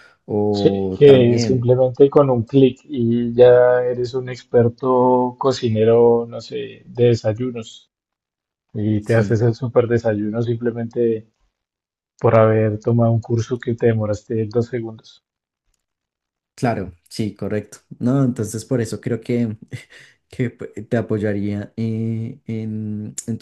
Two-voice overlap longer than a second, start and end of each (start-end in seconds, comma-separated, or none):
0.5-1.7